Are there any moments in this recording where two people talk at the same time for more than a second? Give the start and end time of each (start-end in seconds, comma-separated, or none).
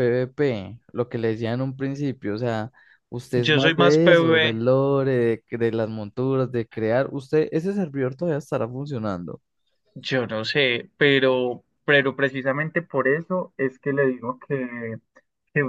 3.3-4.6